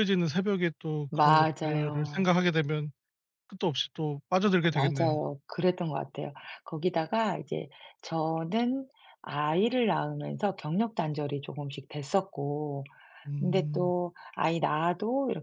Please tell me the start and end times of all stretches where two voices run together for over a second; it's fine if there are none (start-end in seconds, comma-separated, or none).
1.1-2.3